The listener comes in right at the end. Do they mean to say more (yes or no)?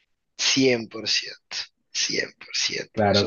yes